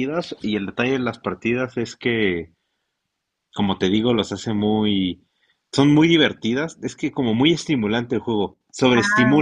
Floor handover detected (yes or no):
yes